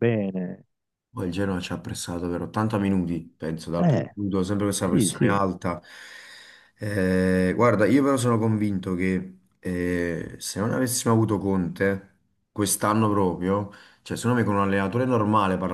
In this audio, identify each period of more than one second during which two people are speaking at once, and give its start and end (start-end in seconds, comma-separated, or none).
none